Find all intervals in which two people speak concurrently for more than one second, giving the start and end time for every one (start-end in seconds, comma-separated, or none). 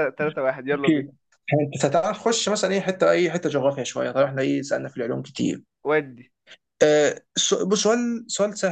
none